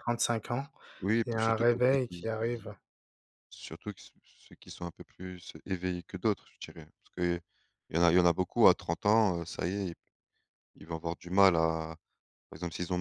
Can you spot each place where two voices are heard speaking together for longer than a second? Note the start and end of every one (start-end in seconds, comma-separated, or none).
1.2-2.7